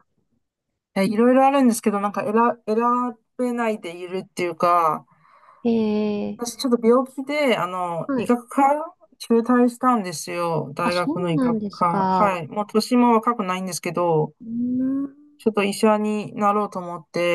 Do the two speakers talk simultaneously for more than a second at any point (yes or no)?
yes